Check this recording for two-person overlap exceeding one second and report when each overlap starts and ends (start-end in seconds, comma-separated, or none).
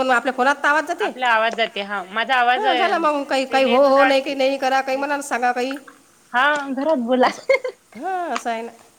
2.6-4.4